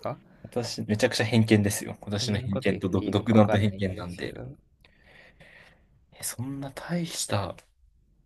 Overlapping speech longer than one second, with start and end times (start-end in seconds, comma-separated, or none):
2.1-4.3